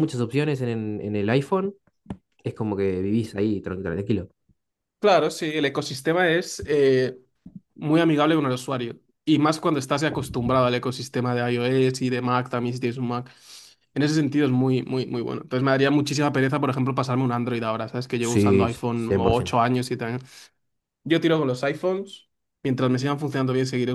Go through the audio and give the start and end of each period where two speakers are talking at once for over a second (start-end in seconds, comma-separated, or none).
18.2-19.6